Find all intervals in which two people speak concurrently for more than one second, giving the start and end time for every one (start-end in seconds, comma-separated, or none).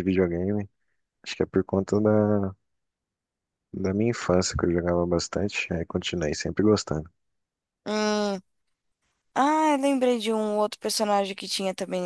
none